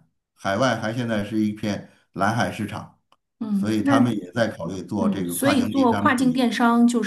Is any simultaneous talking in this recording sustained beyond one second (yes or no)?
yes